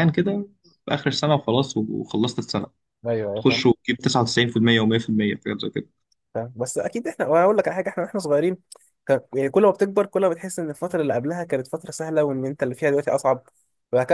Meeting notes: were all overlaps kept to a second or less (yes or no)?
yes